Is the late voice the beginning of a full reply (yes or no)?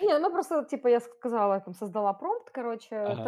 no